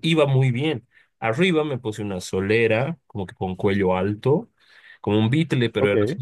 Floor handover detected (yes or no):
no